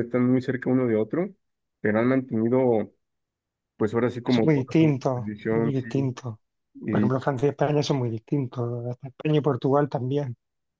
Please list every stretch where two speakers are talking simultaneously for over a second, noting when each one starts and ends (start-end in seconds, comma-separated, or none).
4.3-5.9